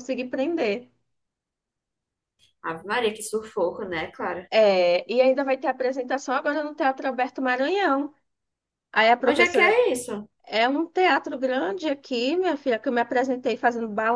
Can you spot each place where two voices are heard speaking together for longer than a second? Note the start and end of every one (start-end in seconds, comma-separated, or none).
none